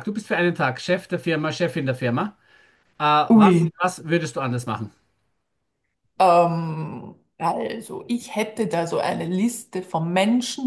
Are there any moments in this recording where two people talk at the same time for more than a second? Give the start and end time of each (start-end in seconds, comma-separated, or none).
none